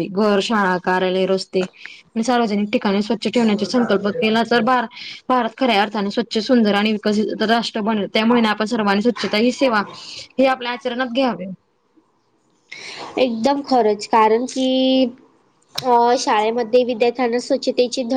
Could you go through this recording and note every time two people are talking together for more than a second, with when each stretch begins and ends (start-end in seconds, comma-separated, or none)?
none